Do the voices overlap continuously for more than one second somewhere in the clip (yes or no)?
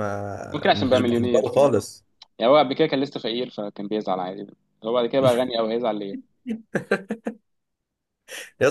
yes